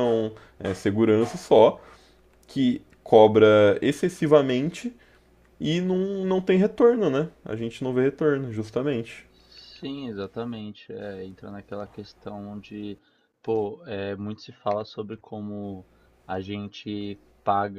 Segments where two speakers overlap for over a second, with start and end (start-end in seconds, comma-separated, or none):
none